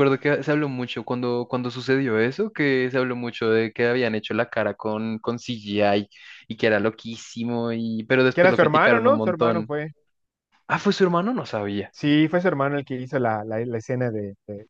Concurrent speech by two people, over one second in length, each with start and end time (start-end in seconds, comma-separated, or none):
8.3-9.7